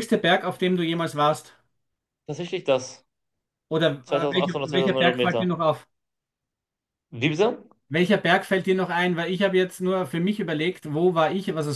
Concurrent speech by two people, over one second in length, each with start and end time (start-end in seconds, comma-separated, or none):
4.0-5.5